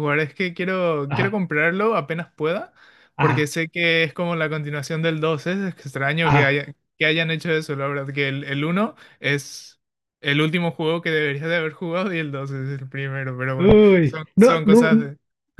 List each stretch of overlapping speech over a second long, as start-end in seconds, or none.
13.6-15.1